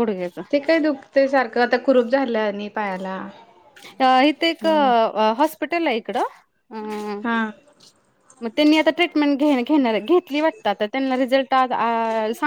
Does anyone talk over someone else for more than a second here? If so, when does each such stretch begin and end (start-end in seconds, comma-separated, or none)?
none